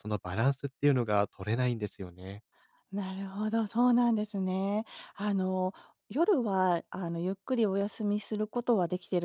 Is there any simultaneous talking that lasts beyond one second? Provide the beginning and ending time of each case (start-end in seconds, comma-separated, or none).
none